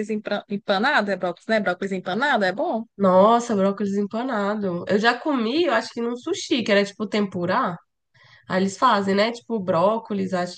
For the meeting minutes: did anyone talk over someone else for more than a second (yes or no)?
no